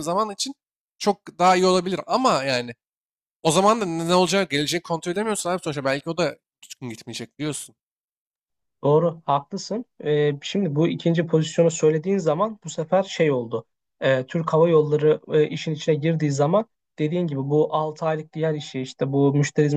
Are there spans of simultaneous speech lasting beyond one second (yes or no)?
no